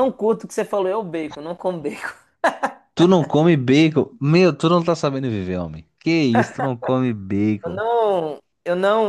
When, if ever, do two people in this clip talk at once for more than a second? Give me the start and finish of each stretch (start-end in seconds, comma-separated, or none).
none